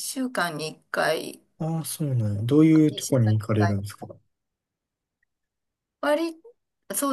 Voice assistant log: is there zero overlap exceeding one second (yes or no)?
no